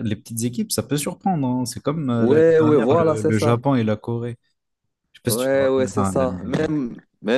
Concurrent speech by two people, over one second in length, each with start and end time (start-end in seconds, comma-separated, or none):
2.2-3.6, 5.3-6.7